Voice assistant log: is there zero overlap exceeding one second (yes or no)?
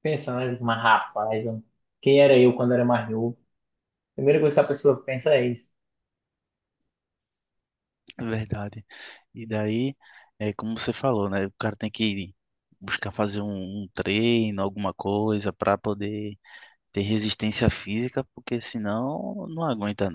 yes